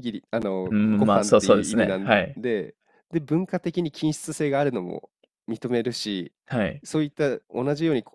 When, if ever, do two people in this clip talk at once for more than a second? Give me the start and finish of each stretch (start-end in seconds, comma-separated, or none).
0.7-2.4